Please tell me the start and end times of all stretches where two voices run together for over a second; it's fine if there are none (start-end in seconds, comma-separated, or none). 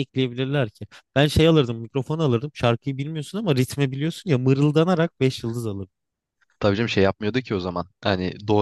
none